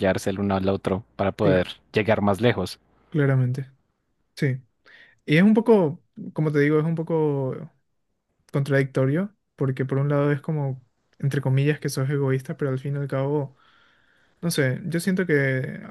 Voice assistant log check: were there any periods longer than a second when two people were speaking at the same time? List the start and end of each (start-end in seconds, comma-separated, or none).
none